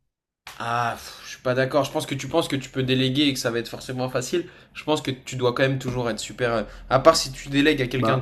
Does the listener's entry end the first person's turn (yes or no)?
no